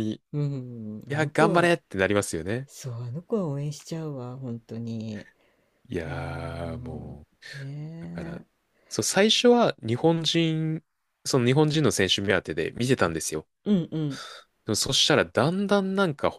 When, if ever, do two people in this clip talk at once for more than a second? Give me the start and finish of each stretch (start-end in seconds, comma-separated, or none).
6.0-7.5